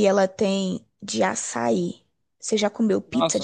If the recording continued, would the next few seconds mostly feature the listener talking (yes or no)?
yes